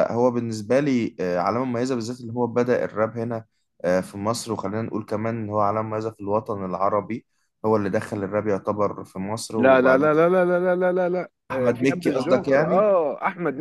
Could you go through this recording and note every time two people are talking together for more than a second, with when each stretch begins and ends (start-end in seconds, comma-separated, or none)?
11.5-12.8